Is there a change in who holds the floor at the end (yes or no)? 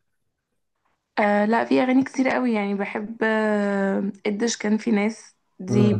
no